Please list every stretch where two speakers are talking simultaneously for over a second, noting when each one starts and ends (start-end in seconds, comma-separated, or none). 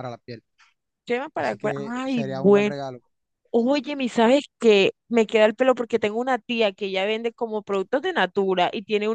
1.4-2.7